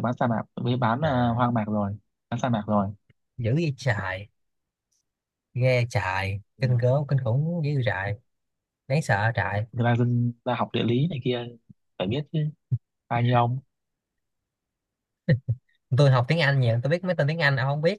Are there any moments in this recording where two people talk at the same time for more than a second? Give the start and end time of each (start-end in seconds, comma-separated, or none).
none